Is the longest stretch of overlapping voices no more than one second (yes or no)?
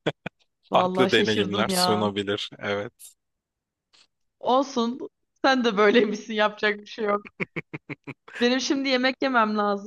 no